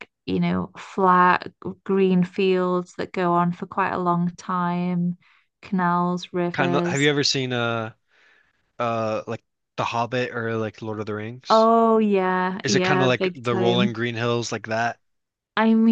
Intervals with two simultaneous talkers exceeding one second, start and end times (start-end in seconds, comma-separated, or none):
12.6-14.0